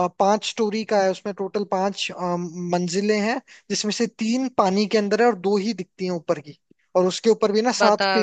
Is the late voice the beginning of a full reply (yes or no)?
no